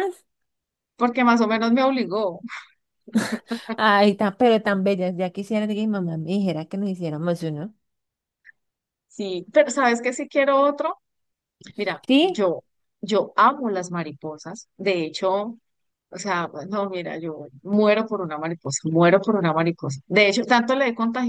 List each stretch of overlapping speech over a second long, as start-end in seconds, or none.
none